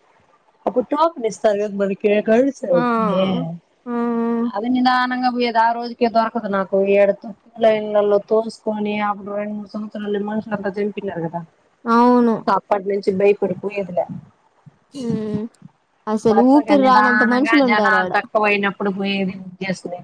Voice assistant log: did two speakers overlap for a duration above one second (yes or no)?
yes